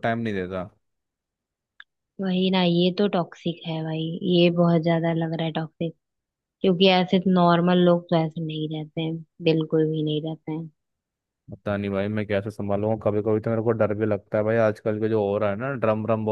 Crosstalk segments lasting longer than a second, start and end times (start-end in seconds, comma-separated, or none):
none